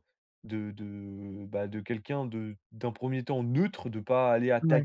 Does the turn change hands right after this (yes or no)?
no